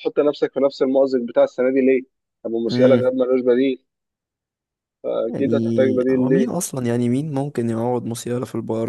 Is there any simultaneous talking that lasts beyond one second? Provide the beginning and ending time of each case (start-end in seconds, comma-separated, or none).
5.3-6.5